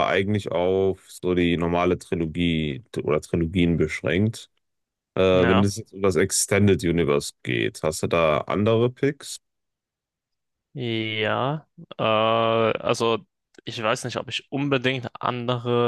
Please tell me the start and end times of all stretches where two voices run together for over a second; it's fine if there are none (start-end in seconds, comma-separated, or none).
none